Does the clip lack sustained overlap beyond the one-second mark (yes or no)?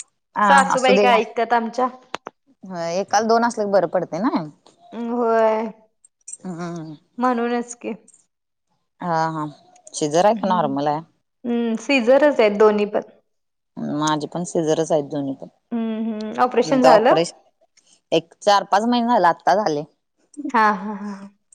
no